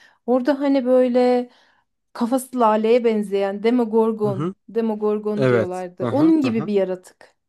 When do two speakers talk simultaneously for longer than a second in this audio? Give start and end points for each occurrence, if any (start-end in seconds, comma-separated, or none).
5.3-6.7